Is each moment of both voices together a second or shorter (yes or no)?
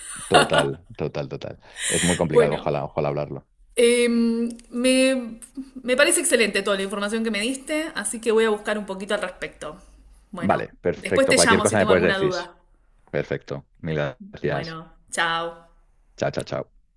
no